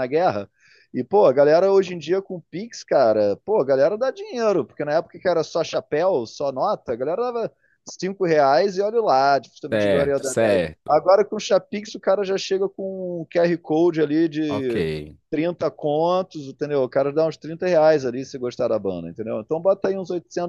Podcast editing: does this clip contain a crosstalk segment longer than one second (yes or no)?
yes